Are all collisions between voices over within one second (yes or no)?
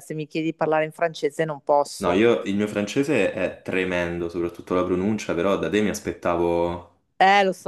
yes